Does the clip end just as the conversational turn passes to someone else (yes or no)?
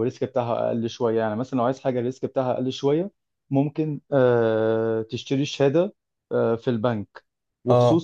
no